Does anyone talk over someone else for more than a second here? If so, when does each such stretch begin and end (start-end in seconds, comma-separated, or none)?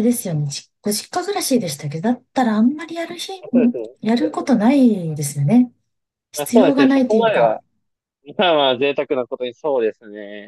6.4-7.6